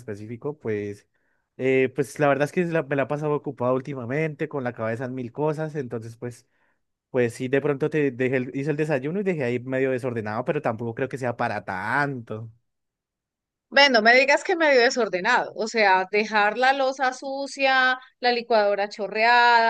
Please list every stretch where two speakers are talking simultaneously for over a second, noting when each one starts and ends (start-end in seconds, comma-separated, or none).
none